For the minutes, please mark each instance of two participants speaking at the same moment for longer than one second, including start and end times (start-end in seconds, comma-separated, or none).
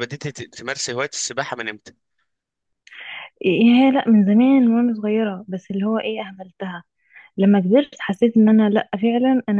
none